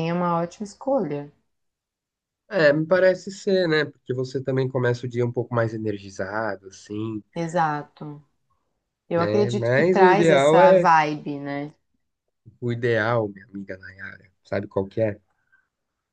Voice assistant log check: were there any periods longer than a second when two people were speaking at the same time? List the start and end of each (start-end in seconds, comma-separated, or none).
9.2-10.9